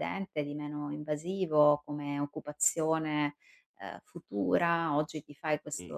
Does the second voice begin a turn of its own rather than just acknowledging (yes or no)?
no